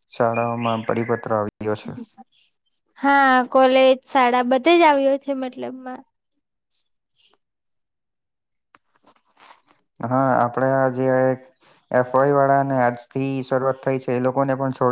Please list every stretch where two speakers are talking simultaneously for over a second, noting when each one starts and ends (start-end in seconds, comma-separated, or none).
none